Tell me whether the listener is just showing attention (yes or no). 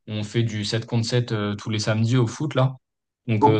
yes